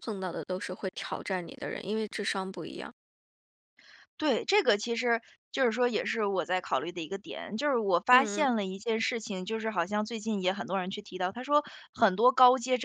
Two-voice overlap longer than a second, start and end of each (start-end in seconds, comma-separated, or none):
none